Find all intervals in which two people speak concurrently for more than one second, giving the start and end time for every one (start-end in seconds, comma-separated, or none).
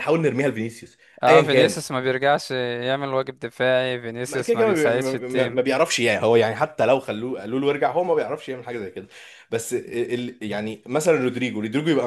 4.3-5.6